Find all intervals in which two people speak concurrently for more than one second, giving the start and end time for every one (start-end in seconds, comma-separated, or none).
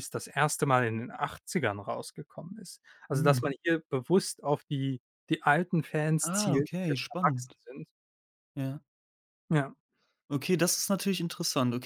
6.2-7.5